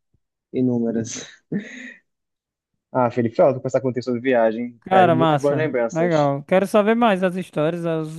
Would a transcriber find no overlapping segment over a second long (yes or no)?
no